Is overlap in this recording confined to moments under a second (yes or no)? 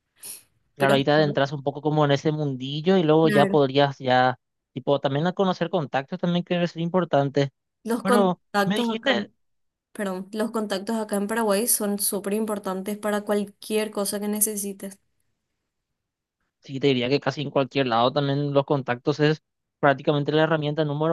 no